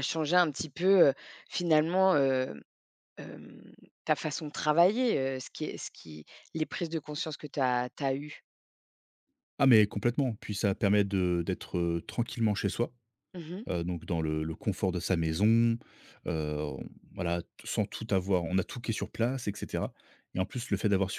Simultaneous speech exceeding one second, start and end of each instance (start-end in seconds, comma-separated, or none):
none